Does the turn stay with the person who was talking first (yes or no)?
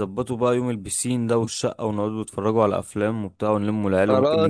no